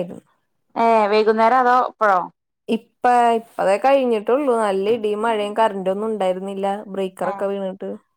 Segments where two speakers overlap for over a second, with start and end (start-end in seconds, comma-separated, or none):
none